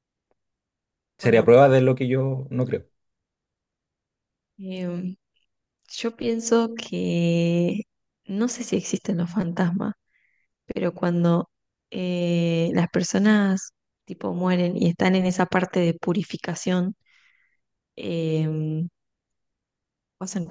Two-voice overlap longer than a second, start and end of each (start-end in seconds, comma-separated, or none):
none